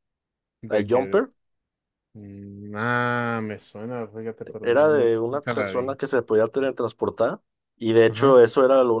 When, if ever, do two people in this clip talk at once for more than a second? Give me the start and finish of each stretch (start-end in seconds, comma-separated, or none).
4.6-6.0